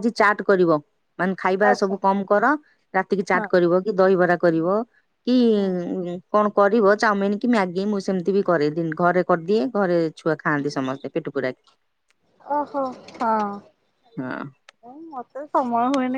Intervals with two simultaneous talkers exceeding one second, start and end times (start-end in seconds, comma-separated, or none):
none